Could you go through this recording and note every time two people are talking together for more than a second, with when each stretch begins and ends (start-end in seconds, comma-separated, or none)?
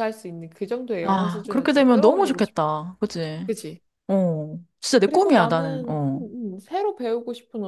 1.1-2.4, 5.0-6.2